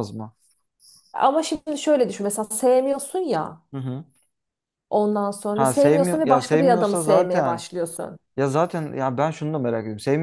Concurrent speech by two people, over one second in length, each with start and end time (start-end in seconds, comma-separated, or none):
5.5-7.6